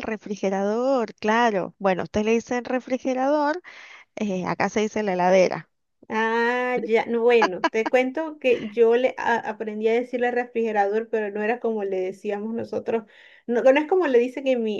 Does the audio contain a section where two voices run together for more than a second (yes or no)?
no